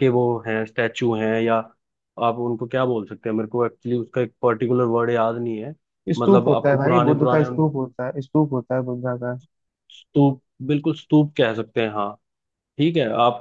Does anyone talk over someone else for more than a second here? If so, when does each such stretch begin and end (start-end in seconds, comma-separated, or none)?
6.2-7.6